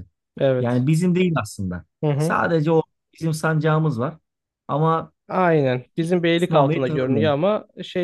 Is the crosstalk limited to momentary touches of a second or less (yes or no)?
no